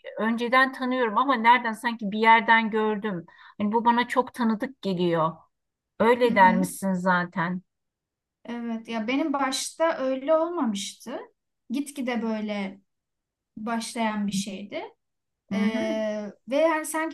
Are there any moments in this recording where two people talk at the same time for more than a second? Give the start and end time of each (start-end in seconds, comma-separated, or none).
none